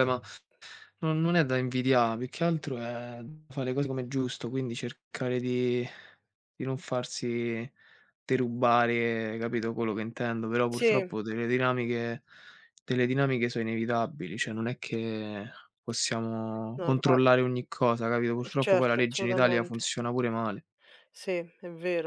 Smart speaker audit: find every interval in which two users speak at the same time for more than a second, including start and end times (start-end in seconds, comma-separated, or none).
18.4-19.9